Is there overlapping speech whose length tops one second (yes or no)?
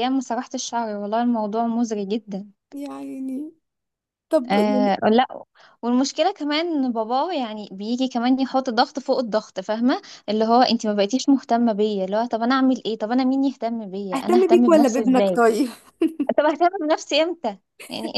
yes